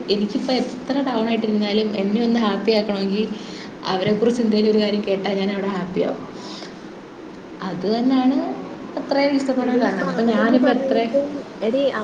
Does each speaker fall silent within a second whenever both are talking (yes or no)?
no